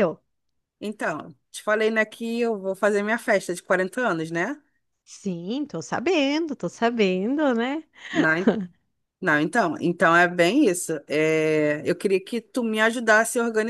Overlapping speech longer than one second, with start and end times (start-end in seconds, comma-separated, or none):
none